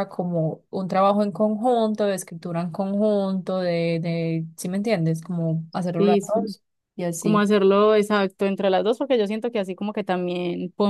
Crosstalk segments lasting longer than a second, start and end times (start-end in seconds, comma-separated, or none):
none